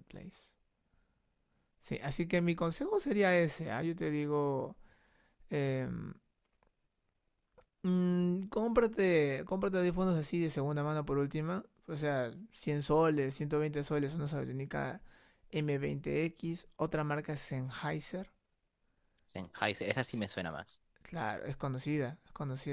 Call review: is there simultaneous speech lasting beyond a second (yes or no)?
no